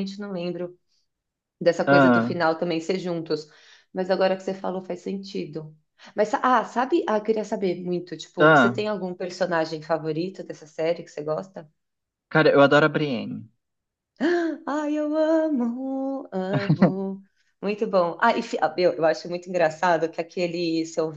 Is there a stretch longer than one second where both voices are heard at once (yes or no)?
no